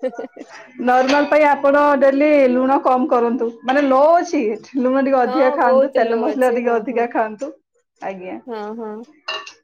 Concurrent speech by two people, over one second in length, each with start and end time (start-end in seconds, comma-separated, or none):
5.3-7.0